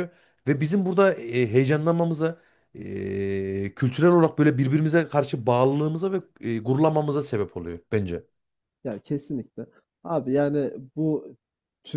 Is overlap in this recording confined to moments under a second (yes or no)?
yes